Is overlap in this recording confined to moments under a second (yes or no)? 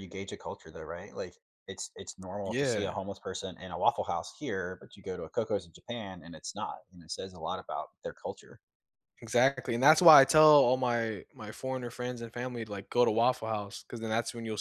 yes